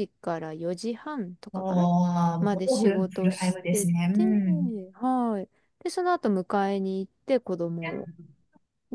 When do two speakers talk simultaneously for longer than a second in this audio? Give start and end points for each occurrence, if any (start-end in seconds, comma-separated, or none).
2.4-4.2